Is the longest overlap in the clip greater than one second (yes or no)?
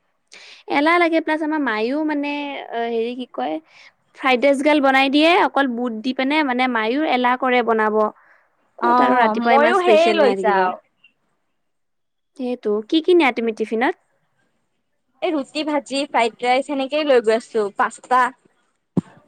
yes